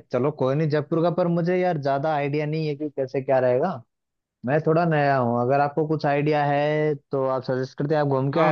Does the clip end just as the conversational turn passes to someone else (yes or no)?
yes